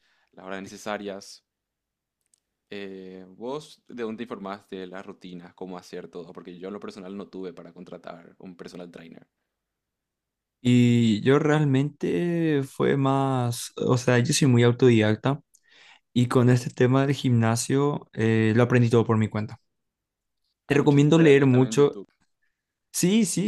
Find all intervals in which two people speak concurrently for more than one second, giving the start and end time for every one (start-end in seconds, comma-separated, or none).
20.7-22.0